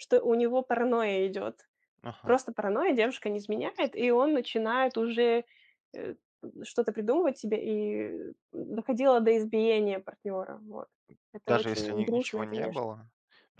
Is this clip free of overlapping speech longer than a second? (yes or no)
no